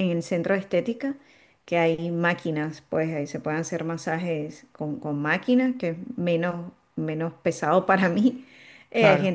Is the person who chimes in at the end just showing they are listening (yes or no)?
yes